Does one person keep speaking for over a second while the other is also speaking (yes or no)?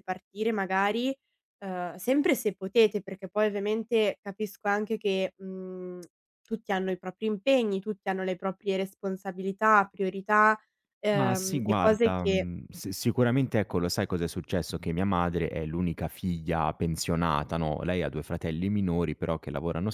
yes